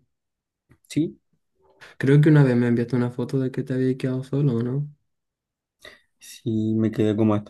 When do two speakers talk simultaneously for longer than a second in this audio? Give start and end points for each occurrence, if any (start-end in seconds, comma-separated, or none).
none